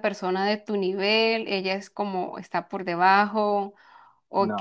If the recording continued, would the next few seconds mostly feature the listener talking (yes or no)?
no